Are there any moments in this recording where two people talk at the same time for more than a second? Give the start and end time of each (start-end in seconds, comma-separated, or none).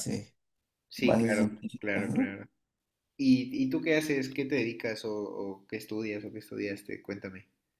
1.0-2.3